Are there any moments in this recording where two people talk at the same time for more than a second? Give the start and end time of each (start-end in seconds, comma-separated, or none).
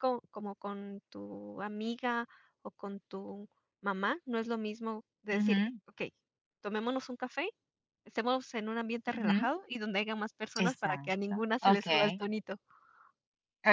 10.6-12.2